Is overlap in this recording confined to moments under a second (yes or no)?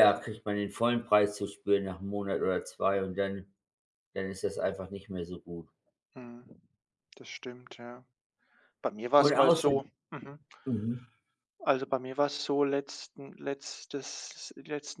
yes